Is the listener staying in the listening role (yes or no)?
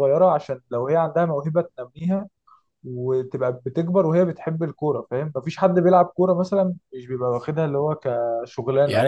no